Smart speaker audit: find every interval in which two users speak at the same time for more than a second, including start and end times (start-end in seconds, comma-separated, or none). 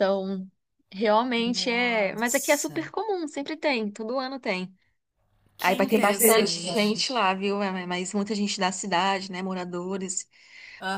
1.5-2.8, 5.6-7.0